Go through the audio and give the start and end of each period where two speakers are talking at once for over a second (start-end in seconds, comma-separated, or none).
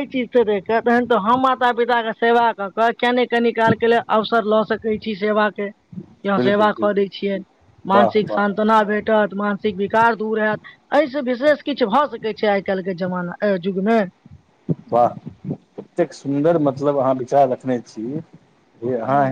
none